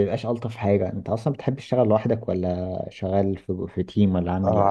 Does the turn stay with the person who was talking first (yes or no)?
no